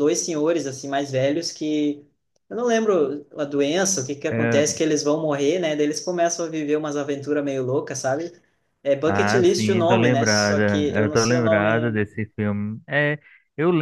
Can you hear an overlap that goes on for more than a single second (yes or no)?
yes